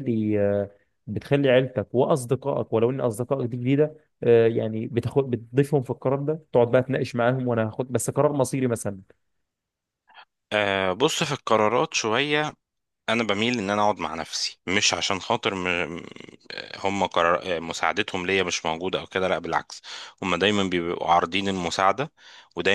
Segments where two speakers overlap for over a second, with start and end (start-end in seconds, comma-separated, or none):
none